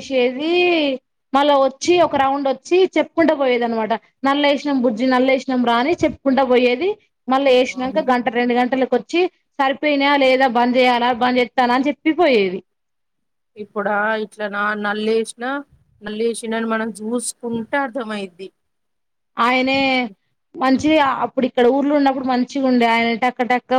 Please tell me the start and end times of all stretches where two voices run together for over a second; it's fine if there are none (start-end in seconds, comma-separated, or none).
none